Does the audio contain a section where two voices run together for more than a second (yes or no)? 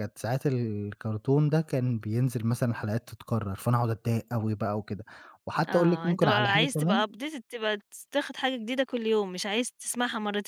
yes